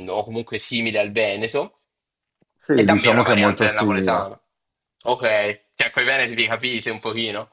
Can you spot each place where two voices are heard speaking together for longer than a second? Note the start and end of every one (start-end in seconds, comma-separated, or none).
2.7-4.3